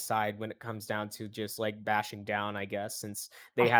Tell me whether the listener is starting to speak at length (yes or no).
no